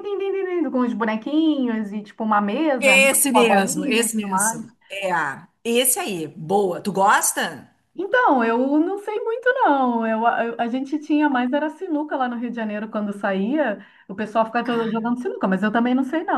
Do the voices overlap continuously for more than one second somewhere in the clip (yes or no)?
yes